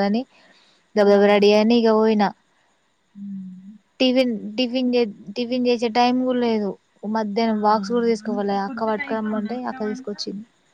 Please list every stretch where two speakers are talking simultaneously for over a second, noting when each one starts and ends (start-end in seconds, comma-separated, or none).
8.3-10.1